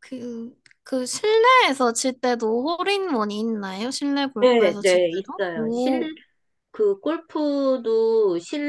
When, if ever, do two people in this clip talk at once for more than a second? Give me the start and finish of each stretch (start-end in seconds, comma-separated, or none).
4.4-6.1